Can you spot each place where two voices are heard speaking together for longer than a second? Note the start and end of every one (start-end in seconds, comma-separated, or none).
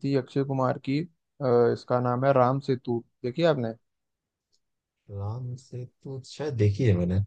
none